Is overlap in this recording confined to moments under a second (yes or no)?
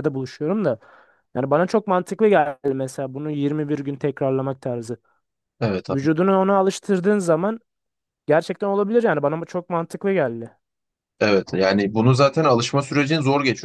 yes